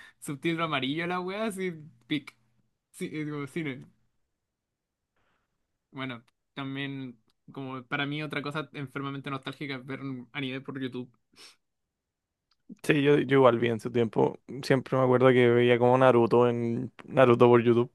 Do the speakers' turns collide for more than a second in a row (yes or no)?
no